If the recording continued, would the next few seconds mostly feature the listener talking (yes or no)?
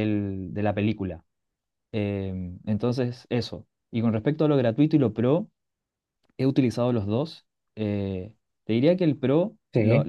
no